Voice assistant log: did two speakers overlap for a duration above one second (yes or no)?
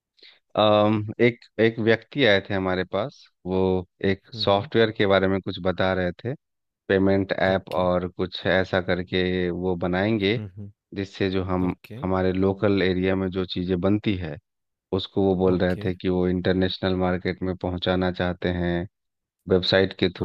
no